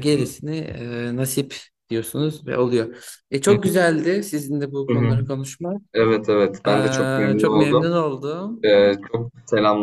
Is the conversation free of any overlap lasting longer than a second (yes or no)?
no